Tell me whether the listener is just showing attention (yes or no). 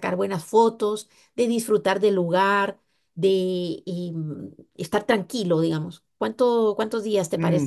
no